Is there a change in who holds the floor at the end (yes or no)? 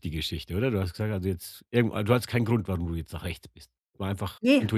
yes